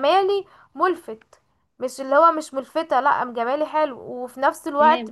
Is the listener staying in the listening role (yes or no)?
yes